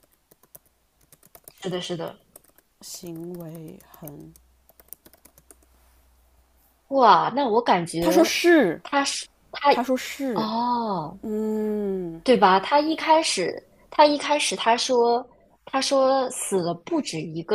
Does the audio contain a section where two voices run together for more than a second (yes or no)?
no